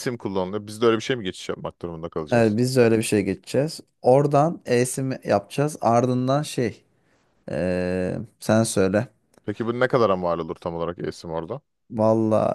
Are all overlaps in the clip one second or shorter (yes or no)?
yes